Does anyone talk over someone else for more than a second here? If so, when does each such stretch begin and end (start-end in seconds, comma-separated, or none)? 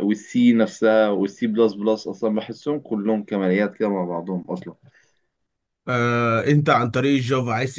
none